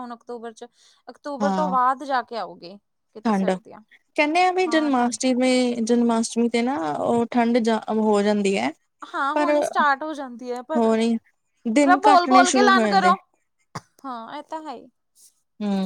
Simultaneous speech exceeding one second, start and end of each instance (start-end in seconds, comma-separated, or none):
11.8-13.1